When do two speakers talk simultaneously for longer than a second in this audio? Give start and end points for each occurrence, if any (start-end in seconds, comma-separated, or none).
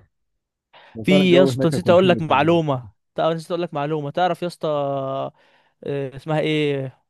1.0-2.9